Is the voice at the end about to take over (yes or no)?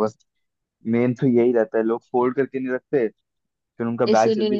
no